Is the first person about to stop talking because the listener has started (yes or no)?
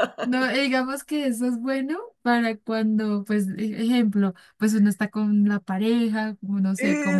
no